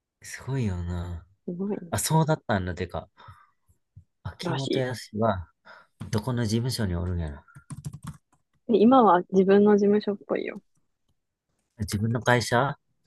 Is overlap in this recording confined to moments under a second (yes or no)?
yes